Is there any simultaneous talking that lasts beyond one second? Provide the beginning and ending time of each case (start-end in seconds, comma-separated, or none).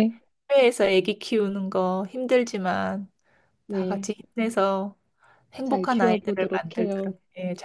5.6-7.1